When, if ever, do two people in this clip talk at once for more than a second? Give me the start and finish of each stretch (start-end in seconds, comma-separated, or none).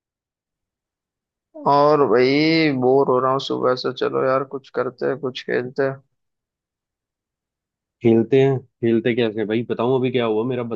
none